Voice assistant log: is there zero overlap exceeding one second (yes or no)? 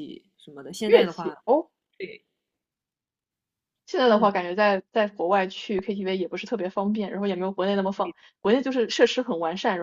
yes